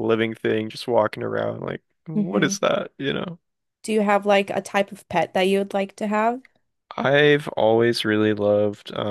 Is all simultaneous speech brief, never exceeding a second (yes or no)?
yes